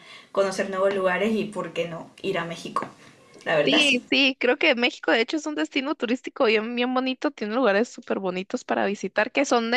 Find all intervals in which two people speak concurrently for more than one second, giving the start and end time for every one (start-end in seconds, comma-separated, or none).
none